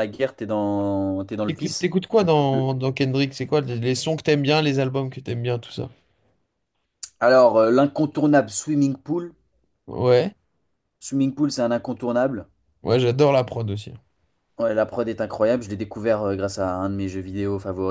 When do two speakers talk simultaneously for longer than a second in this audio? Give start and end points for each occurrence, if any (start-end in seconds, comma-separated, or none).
none